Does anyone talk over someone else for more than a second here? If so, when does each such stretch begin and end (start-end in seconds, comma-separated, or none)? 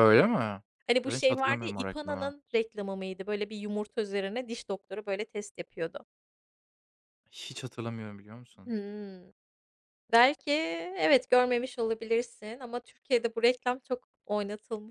1.0-2.3